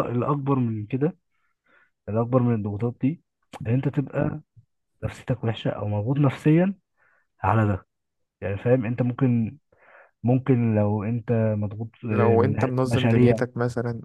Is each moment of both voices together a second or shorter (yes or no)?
no